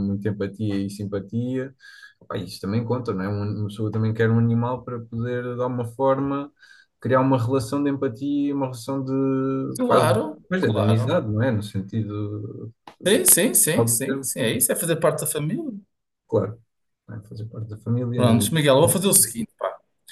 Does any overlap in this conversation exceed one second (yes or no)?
yes